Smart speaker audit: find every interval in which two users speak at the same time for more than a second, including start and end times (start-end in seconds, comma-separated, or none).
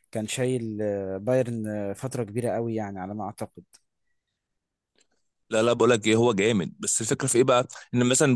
none